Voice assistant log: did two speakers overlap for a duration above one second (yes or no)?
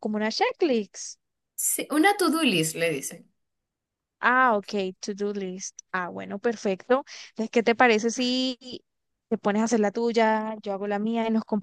no